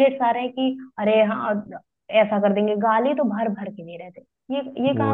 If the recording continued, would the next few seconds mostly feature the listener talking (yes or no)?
yes